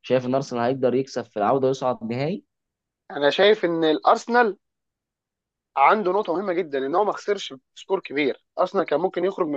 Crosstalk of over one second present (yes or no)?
no